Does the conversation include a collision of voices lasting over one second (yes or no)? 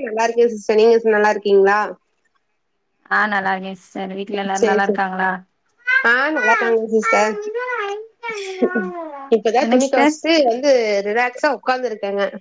no